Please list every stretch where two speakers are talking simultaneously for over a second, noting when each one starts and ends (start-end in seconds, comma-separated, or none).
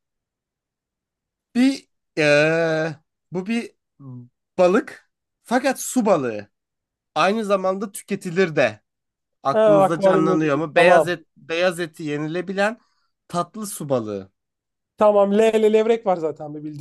9.5-11.2